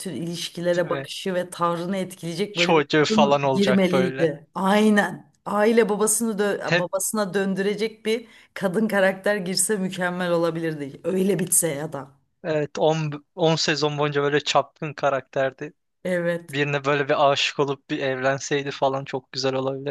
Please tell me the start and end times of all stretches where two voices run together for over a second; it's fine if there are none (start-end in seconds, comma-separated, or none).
2.5-4.3